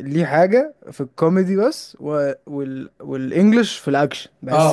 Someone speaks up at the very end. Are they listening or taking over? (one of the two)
taking over